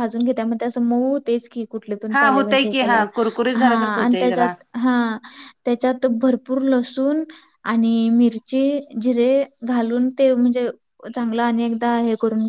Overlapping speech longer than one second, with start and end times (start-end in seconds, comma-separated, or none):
2.1-4.5